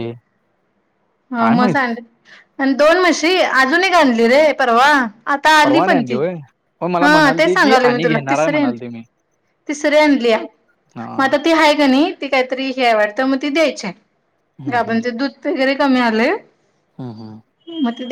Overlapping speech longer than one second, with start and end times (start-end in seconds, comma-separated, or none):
7.0-8.8